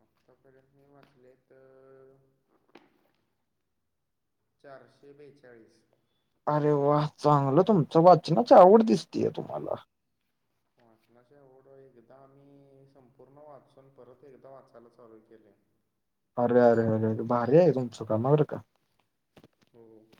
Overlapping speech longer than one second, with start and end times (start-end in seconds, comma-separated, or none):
none